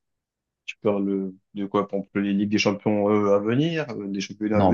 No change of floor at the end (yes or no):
no